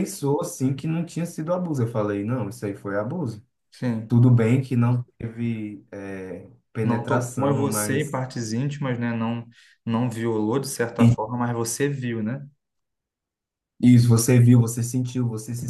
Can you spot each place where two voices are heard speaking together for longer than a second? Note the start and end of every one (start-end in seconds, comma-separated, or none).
6.8-8.2